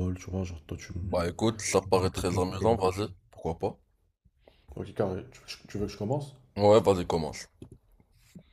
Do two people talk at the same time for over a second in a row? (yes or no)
yes